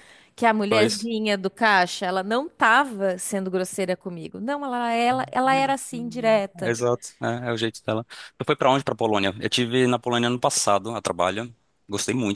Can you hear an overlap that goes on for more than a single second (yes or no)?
no